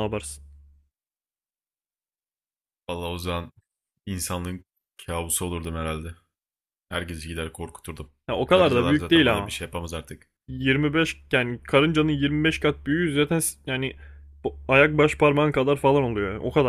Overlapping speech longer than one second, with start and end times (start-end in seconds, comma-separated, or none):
8.3-9.5